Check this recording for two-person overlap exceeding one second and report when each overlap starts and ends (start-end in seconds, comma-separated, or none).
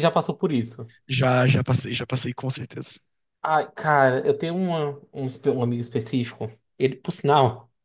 none